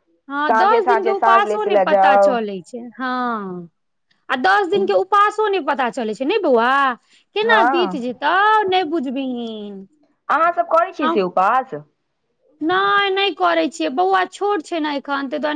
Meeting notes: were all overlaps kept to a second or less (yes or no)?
no